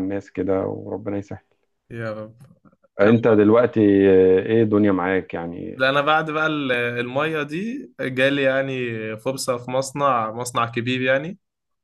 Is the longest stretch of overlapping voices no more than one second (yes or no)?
yes